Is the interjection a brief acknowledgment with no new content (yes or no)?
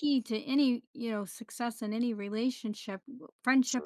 yes